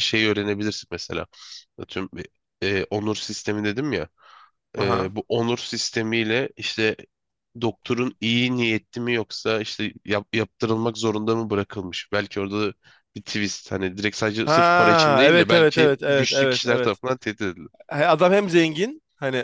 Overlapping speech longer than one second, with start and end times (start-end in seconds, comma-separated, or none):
14.4-17.0